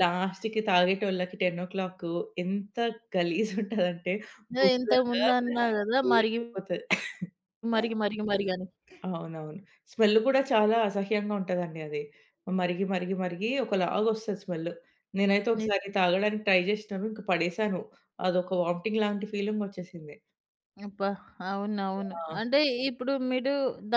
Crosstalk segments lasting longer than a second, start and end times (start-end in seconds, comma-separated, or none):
4.6-6.4